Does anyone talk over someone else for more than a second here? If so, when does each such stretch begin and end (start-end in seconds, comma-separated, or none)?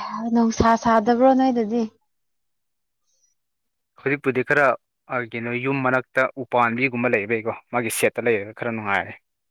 none